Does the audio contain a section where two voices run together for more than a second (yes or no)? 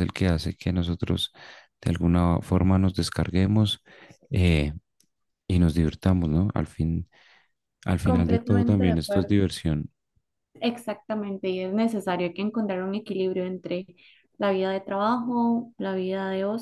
yes